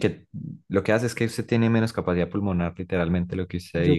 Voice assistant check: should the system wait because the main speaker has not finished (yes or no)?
no